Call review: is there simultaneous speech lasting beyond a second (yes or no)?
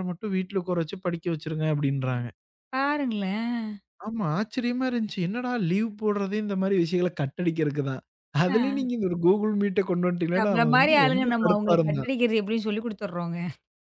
yes